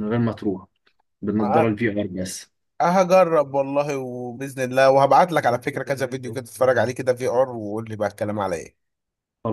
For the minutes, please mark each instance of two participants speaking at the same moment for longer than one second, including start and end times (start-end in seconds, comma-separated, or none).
none